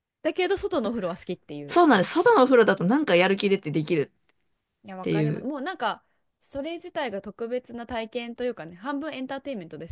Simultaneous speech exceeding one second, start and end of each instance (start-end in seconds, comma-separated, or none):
none